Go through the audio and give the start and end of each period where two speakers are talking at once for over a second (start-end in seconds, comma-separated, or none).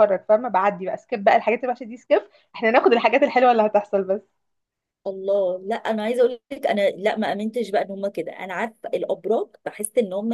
none